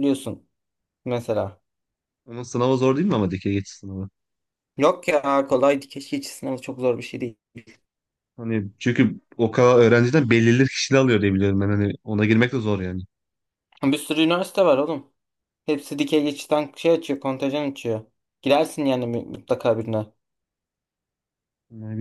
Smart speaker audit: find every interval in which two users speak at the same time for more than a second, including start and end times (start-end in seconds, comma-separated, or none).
none